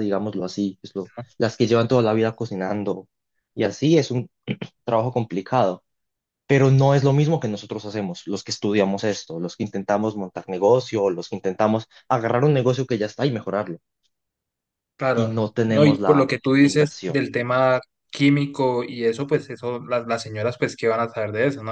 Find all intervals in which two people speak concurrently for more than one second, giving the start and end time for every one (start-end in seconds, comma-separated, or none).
15.1-17.2